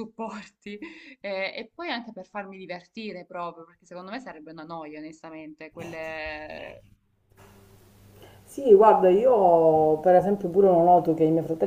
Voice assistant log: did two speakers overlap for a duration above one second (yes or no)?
no